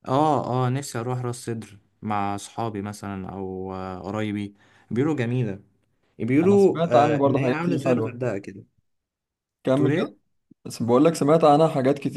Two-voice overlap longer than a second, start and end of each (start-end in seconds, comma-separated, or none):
6.4-8.2